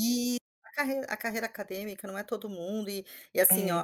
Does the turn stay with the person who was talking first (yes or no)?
yes